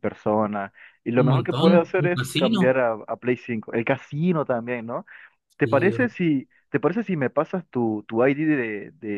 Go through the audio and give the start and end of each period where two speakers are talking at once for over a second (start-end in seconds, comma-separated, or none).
1.2-2.7